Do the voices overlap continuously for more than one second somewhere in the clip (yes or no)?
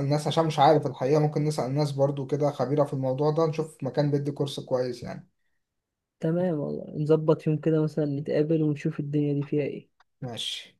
no